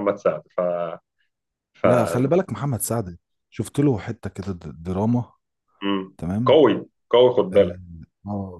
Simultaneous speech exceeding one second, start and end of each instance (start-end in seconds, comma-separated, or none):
none